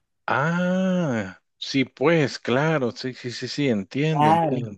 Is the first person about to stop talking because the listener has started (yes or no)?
yes